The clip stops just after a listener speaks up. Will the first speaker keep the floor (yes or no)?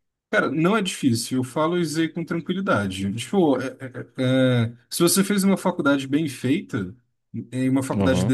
yes